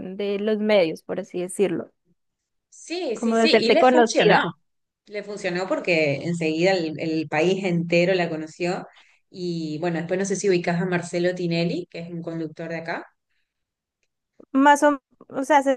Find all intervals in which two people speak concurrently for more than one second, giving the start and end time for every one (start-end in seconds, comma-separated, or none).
3.1-4.5